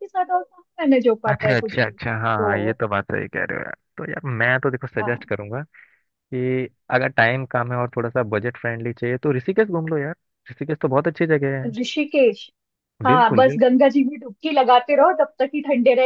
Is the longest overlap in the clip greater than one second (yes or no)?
yes